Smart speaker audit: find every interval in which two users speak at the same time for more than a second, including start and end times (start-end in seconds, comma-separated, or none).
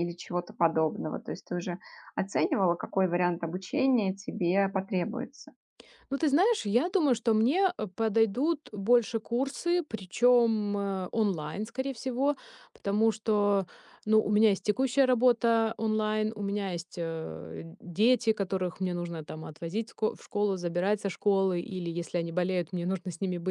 none